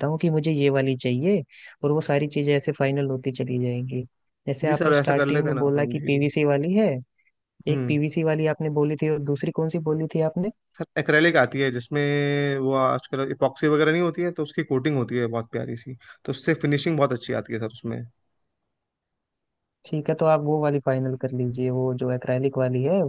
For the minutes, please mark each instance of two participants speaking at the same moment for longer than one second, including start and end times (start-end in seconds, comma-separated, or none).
4.6-6.2